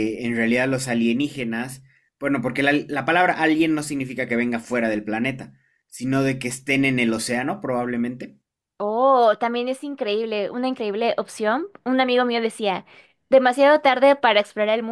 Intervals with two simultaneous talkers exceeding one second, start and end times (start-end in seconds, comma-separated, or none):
none